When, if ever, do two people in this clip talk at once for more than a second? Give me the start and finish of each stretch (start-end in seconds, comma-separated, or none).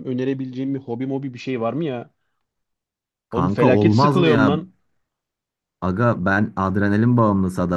3.3-4.6